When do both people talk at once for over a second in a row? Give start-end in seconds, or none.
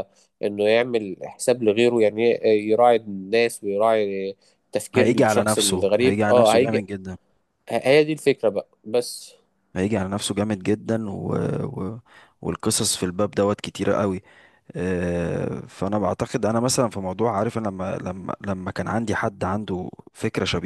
5.0-6.8